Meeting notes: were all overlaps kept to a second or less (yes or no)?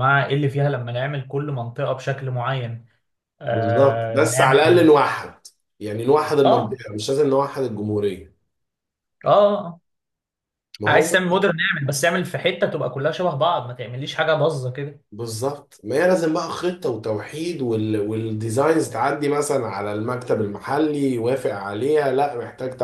no